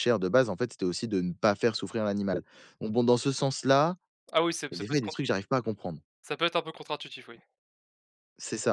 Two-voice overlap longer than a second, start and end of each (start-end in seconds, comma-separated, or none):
none